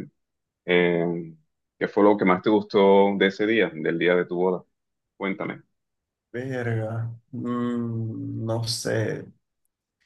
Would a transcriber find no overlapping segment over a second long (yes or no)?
yes